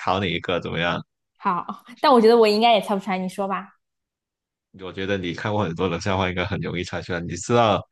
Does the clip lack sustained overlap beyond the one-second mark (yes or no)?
yes